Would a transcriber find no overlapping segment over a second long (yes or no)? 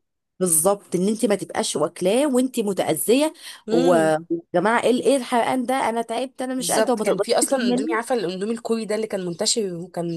no